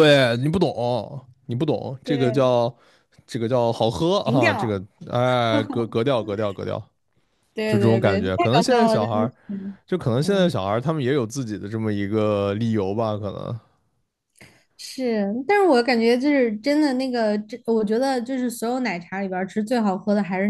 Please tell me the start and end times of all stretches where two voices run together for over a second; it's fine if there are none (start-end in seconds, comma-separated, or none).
7.7-9.3